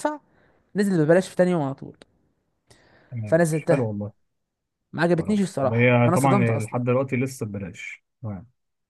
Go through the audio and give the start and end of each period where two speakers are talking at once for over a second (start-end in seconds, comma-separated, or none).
5.2-6.8